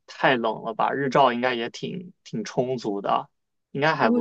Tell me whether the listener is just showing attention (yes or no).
no